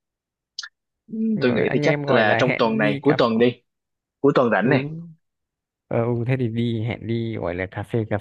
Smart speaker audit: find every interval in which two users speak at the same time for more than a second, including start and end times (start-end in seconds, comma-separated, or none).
1.4-3.2